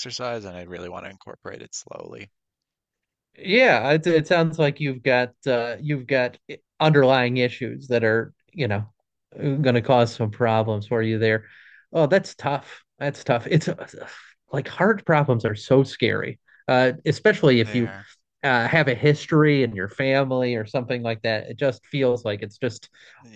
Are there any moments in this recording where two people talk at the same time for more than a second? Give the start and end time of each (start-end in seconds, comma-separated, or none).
none